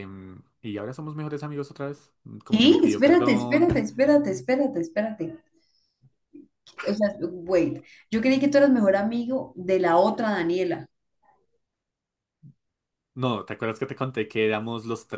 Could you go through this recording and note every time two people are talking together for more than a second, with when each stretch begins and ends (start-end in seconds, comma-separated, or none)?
2.5-3.7